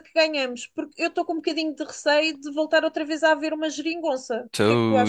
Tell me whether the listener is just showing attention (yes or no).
no